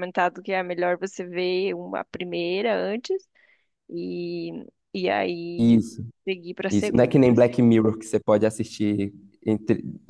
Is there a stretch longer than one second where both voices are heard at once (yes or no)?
no